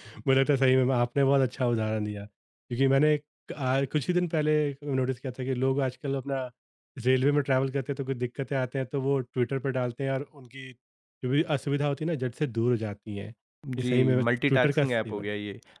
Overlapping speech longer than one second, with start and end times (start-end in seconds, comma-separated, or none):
13.8-15.3